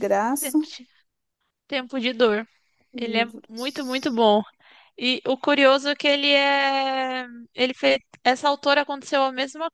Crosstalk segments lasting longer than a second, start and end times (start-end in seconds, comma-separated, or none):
3.0-4.2